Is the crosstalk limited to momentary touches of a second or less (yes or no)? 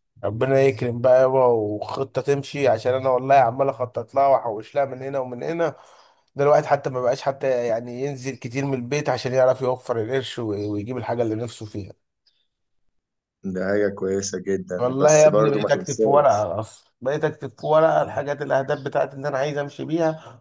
no